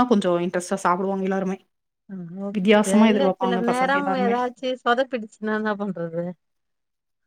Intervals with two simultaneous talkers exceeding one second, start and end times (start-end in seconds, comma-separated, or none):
2.6-4.3